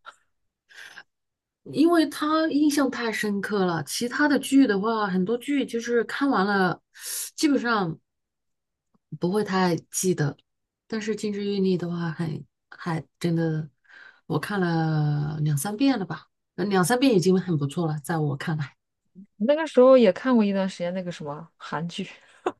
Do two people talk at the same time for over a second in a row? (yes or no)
no